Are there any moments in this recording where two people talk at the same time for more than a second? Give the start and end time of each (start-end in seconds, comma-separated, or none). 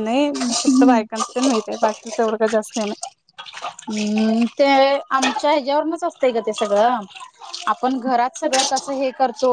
none